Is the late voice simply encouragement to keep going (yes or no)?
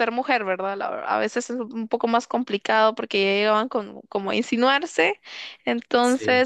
yes